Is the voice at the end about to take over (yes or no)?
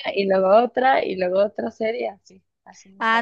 yes